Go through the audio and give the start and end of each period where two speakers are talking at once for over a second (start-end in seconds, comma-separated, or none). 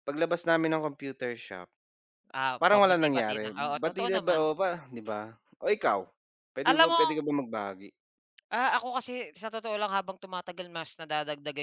2.6-4.4